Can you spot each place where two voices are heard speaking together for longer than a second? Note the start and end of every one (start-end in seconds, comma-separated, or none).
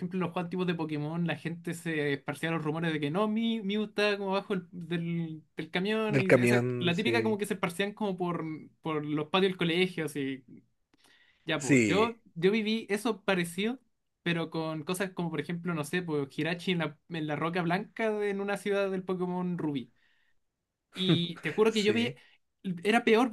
6.1-7.4